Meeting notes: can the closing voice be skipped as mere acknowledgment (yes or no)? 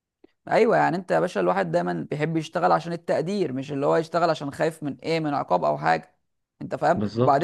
yes